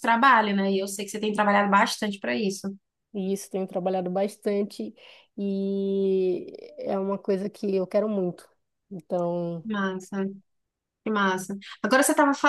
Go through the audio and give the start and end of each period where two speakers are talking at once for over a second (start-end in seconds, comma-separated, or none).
none